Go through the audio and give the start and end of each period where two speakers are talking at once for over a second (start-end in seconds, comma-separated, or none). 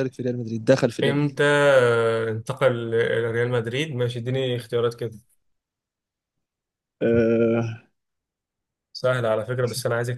none